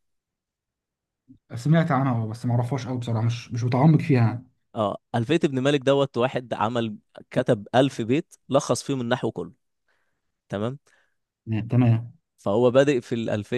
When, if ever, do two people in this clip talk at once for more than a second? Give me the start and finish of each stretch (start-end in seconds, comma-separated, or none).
none